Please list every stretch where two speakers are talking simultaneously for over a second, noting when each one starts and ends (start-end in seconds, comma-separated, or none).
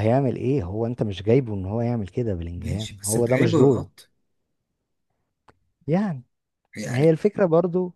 2.6-3.9